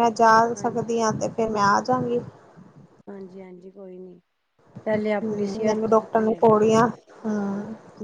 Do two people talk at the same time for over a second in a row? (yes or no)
yes